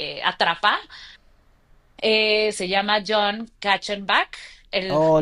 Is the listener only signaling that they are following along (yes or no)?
no